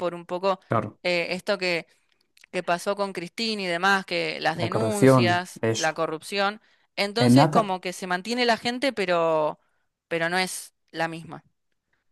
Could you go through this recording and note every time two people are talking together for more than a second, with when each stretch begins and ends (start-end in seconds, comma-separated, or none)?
4.6-6.0